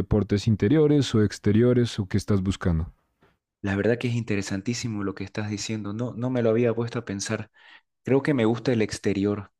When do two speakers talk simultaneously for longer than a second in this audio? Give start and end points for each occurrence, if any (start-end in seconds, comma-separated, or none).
none